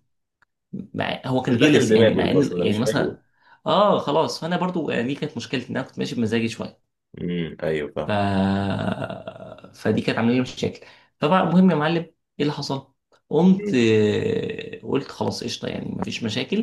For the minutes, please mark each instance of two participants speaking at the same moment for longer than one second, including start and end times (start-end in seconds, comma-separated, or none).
1.4-3.2